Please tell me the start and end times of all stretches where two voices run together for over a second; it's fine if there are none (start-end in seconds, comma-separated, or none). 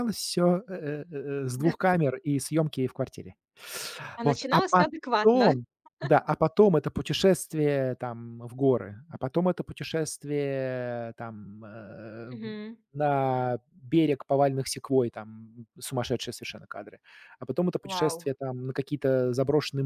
4.2-5.5